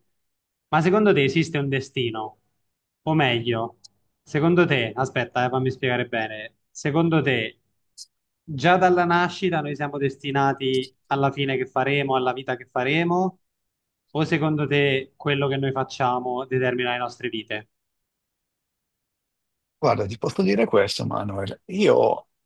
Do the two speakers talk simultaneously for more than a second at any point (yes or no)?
no